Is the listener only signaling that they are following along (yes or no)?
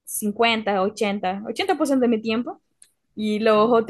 yes